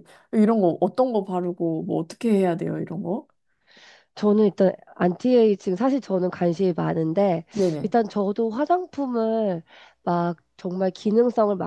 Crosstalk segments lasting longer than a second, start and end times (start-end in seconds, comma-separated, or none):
none